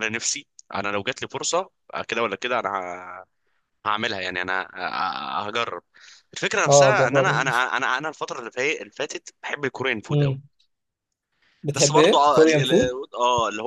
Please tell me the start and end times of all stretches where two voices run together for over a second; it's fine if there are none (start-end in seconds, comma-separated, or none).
11.8-12.9